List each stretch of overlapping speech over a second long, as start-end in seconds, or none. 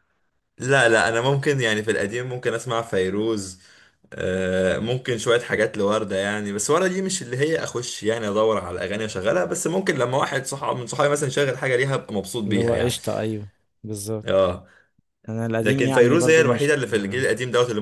15.6-16.9